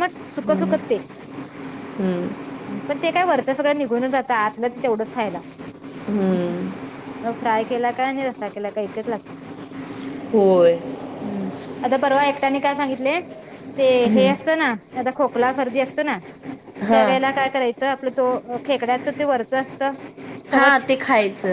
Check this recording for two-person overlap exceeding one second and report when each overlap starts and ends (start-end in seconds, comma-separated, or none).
none